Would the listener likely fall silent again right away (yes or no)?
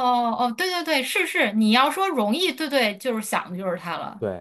no